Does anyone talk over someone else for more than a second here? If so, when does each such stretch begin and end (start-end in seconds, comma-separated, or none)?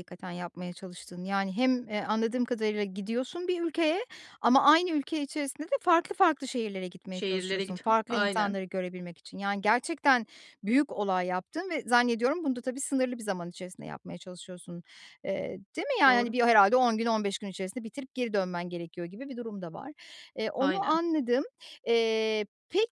7.1-8.6